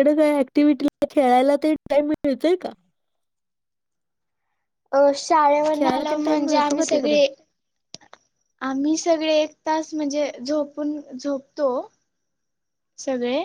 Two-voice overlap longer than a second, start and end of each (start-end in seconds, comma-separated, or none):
5.7-7.2